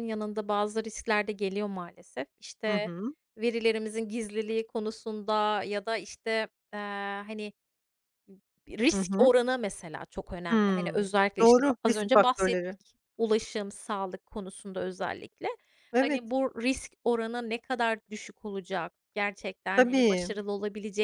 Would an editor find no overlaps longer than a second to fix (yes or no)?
no